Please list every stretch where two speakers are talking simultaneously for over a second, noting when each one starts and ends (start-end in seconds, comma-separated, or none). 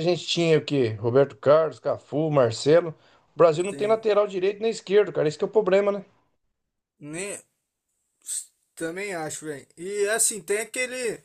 none